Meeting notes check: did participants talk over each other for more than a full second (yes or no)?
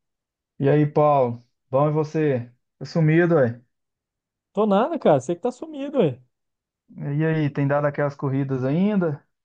no